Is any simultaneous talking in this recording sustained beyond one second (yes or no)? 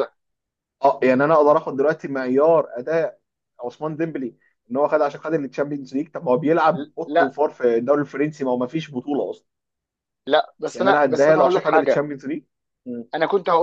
yes